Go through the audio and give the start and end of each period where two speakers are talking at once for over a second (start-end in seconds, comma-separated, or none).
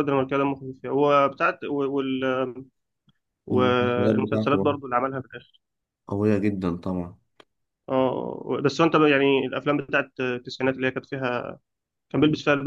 3.5-4.7